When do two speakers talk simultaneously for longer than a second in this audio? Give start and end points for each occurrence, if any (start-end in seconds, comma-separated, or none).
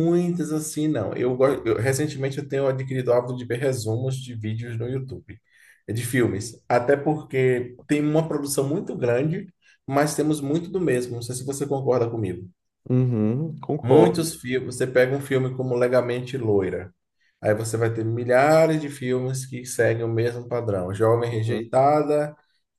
none